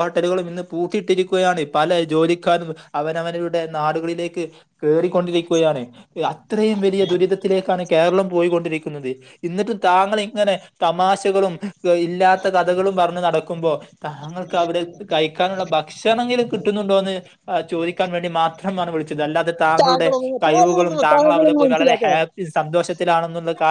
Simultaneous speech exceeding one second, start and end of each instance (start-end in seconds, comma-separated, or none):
19.8-22.2